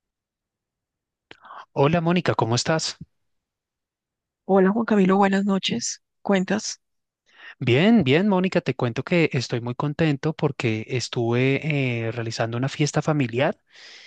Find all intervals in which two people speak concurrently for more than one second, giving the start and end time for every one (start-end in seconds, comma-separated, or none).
none